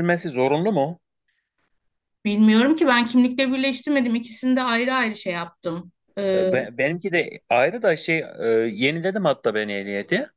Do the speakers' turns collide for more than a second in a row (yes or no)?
no